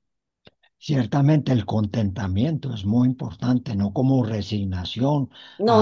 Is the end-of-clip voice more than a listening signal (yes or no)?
no